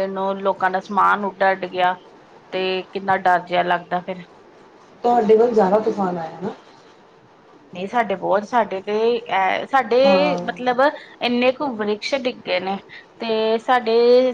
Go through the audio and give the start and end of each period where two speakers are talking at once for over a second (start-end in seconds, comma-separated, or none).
none